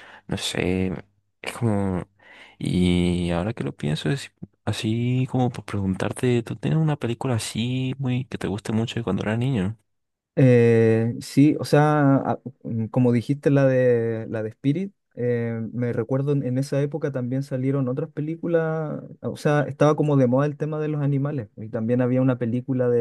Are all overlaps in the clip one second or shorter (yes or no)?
yes